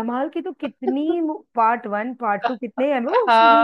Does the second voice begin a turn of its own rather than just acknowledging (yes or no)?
yes